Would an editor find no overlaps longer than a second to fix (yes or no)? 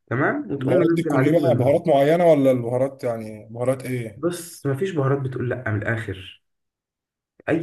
no